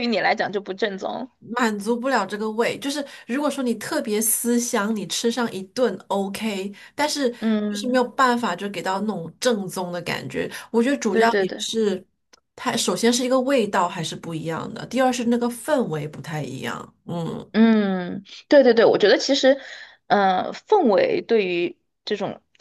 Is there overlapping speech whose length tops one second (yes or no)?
no